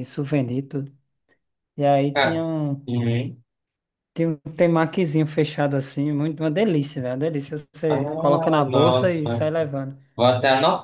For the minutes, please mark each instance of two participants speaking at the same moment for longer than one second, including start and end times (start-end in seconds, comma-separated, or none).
7.9-9.5